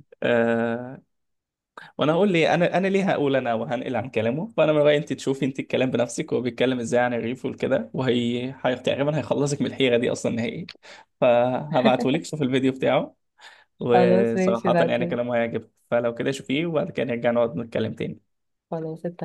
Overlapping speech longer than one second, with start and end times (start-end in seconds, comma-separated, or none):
13.9-15.1